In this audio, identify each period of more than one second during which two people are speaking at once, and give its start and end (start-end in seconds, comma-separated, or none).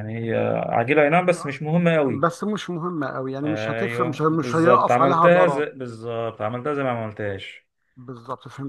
3.4-5.6